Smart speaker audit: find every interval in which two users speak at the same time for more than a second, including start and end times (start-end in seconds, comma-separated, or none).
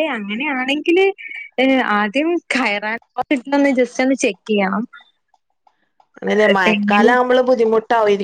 none